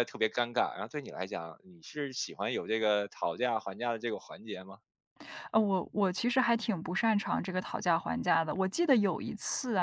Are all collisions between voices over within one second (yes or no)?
yes